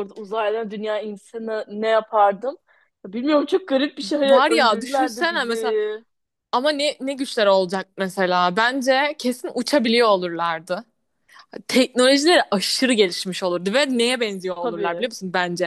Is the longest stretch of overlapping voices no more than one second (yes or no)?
no